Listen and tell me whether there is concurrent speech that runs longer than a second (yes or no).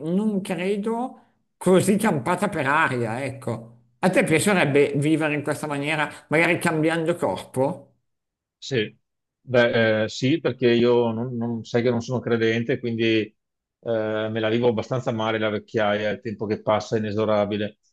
no